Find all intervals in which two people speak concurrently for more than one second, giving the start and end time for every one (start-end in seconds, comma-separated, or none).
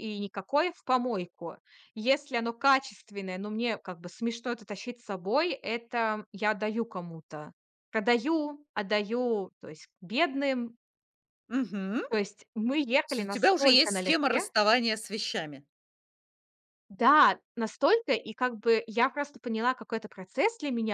13.0-14.5